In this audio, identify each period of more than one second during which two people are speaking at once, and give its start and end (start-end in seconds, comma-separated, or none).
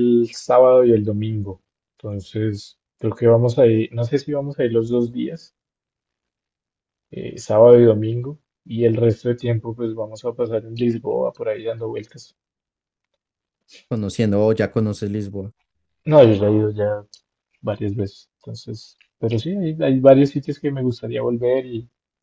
none